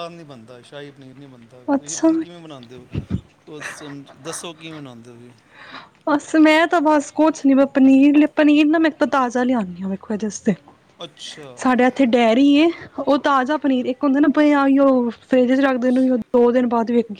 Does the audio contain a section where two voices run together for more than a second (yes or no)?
no